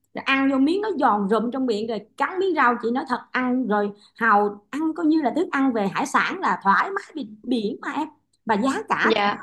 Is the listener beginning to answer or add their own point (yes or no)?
no